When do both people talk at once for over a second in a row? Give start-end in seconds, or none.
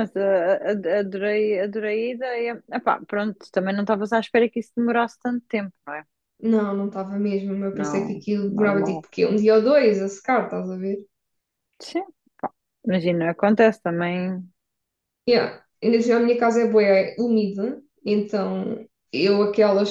7.7-9.0